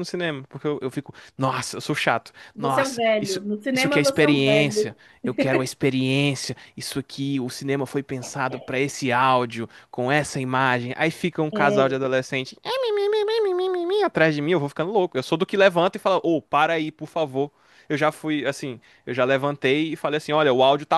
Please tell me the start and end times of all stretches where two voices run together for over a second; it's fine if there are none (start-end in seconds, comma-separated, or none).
2.5-4.9